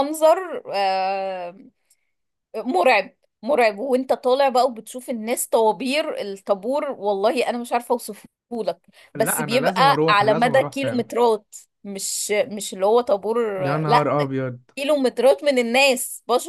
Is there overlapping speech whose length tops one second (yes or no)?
yes